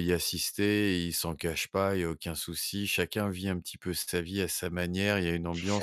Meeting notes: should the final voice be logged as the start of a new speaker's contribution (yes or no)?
no